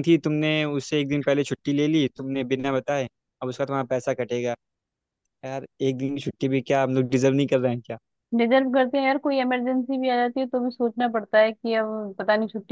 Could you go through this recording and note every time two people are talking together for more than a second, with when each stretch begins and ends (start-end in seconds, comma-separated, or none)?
none